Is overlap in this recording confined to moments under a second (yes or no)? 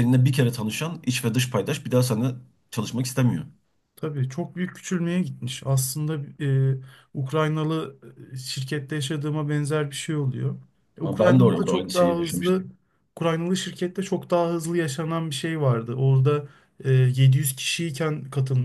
no